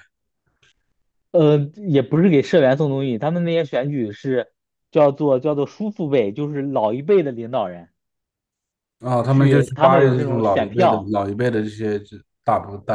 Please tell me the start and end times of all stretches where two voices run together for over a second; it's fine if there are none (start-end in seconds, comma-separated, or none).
9.2-11.1